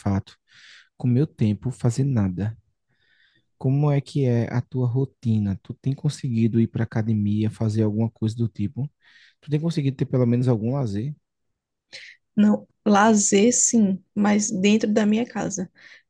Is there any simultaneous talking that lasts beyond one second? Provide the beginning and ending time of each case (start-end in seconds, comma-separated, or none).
none